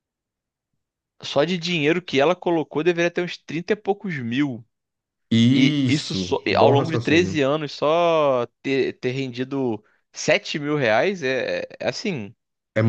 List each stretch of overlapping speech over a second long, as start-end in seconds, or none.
5.5-7.5